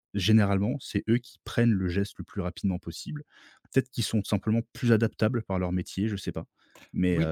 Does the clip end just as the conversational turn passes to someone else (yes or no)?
yes